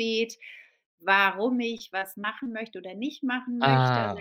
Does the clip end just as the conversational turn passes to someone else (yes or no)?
no